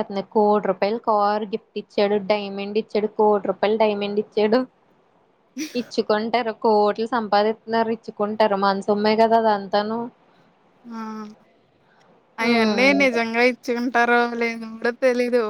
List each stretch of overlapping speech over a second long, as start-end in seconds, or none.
none